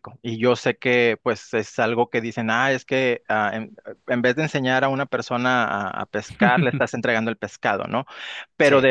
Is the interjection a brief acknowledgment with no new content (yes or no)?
yes